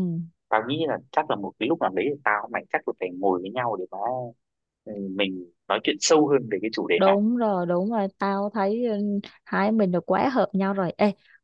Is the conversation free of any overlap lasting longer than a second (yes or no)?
yes